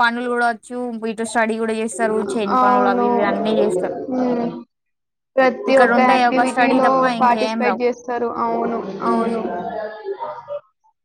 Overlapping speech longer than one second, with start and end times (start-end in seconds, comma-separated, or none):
5.7-7.8